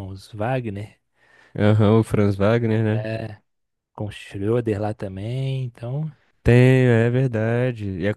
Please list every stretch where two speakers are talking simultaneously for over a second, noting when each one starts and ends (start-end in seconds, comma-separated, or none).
none